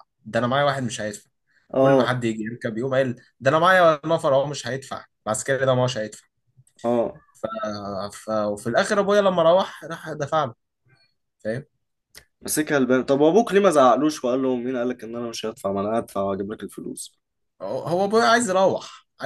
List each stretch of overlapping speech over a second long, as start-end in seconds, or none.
none